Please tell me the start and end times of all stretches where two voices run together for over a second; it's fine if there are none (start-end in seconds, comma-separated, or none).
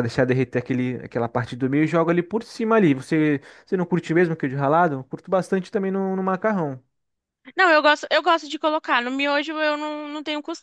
none